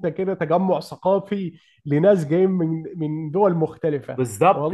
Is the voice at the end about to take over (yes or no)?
yes